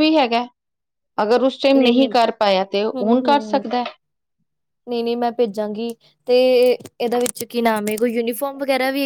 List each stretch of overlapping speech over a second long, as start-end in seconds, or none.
none